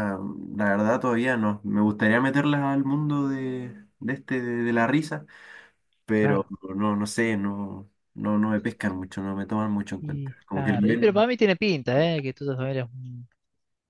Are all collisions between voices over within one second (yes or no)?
no